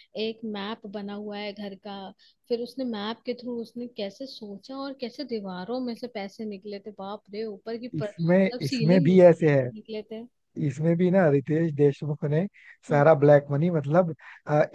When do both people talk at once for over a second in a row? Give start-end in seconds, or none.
7.9-9.7